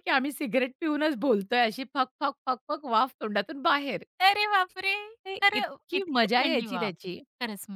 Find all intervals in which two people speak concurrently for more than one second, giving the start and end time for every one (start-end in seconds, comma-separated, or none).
5.4-7.2